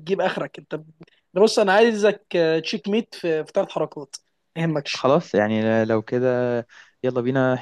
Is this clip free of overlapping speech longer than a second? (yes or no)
yes